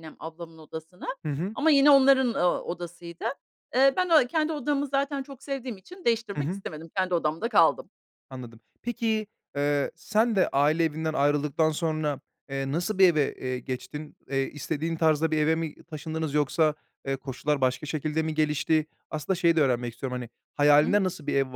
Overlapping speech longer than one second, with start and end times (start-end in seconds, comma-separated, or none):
none